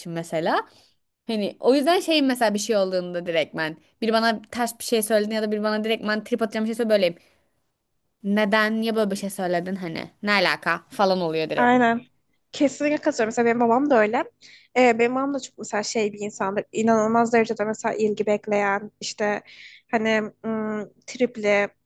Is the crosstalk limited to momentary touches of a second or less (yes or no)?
yes